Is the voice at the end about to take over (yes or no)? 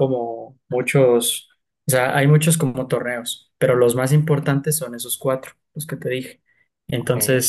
no